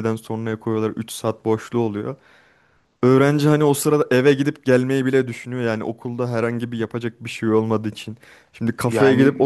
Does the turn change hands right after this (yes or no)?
no